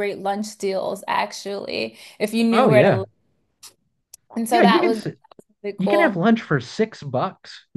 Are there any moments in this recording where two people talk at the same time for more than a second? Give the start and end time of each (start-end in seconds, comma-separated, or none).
none